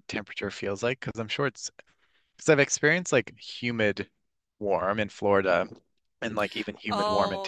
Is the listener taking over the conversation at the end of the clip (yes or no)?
no